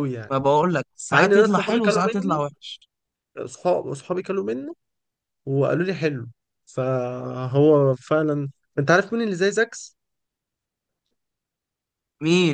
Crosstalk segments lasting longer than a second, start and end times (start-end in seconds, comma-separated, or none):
1.1-2.4